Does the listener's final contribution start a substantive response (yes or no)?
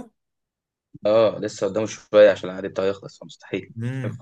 yes